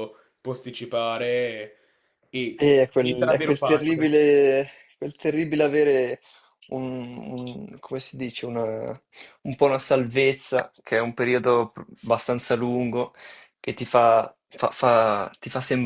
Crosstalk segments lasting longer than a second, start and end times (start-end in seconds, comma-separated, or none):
2.5-4.0